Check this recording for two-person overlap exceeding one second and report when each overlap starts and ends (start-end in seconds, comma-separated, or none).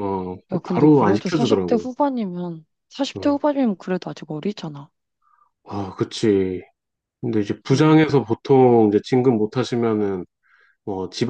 0.5-1.9